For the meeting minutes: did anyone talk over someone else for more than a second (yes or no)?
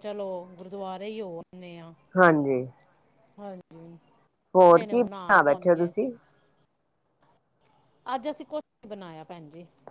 yes